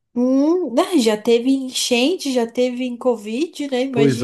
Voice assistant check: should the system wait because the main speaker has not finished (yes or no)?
no